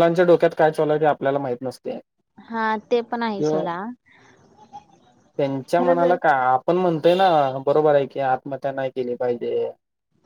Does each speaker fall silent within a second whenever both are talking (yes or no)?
yes